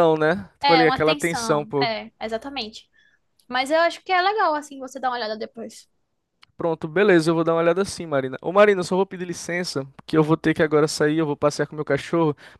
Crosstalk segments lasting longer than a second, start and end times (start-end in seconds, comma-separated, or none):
0.6-1.9